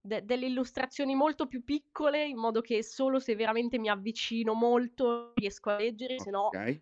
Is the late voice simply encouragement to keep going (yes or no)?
yes